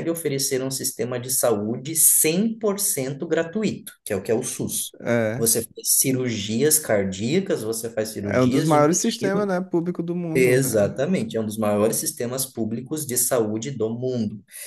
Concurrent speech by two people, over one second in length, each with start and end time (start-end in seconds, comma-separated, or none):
8.2-9.5